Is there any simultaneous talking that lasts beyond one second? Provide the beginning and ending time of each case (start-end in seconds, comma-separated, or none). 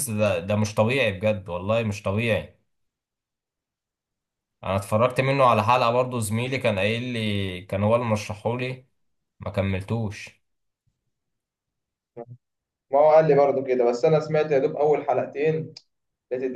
none